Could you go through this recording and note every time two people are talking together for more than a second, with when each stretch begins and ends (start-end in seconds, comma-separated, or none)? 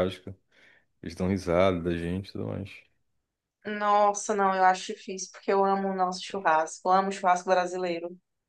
none